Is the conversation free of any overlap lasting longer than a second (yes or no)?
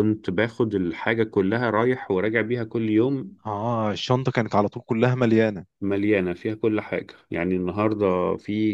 yes